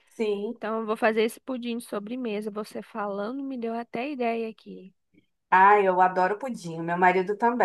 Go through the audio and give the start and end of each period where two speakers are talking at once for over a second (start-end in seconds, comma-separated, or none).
none